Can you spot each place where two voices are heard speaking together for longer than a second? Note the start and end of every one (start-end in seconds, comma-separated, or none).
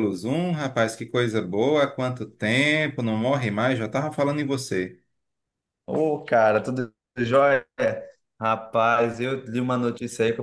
none